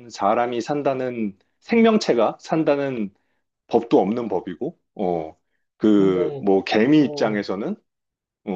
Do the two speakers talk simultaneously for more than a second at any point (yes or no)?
yes